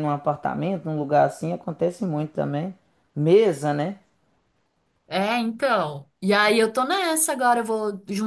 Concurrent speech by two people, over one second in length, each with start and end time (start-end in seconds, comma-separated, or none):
none